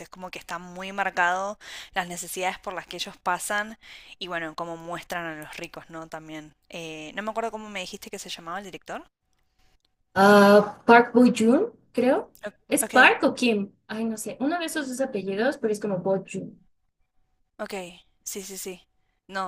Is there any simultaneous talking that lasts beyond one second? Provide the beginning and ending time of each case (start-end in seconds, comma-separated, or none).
none